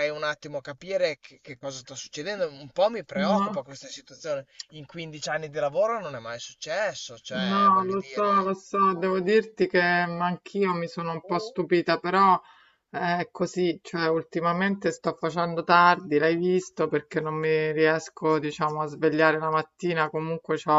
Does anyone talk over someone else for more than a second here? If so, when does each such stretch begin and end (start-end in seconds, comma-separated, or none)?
7.3-8.5